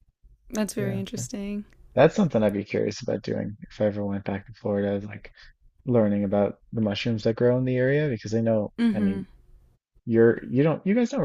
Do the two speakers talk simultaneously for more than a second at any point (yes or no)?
no